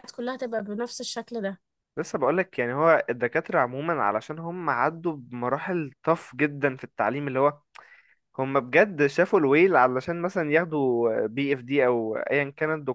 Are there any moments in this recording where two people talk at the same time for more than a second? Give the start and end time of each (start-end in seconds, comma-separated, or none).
none